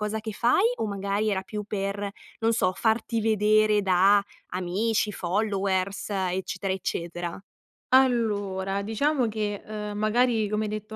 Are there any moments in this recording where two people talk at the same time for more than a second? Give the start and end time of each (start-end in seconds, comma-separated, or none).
none